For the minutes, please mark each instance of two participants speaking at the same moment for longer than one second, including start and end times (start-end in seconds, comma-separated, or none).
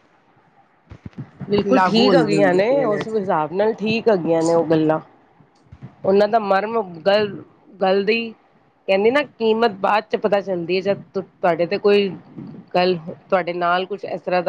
1.7-3.3